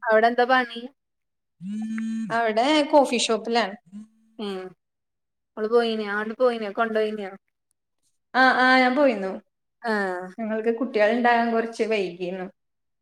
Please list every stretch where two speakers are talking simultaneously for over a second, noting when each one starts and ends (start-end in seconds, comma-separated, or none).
none